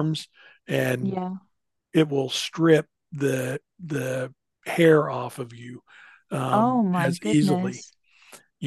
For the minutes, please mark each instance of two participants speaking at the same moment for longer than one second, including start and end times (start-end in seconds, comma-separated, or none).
6.5-7.8